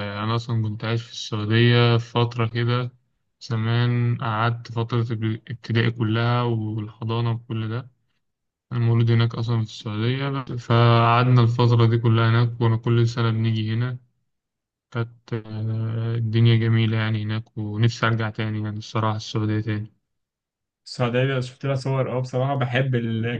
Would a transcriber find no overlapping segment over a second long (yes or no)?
yes